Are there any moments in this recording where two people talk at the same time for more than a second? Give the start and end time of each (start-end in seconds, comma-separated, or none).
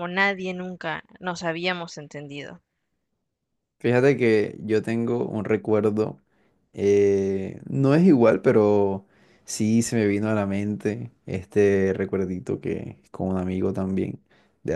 none